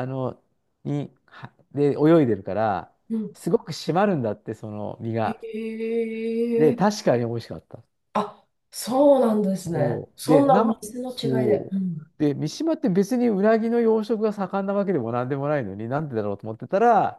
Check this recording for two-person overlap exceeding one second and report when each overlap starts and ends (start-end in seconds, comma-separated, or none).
9.7-11.7